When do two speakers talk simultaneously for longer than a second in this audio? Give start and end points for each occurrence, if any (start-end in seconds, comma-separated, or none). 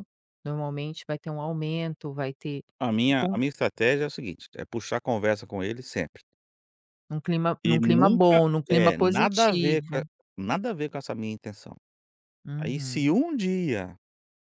7.6-10.0